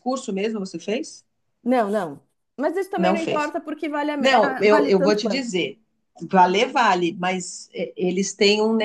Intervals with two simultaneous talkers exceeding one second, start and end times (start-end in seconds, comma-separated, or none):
4.2-5.5